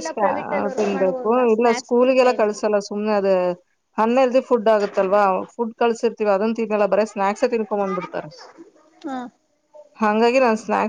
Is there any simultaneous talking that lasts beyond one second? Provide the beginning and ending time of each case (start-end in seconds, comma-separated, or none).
0.8-2.6